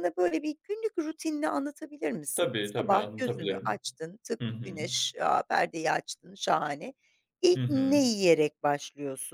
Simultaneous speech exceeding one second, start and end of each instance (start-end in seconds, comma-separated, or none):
2.4-3.8